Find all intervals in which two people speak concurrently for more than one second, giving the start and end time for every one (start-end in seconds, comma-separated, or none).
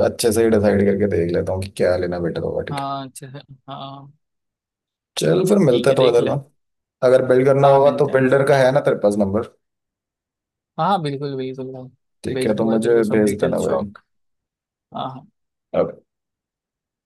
12.3-13.9